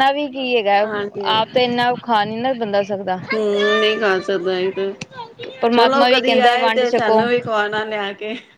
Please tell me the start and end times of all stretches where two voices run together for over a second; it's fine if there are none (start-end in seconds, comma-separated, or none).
5.7-7.2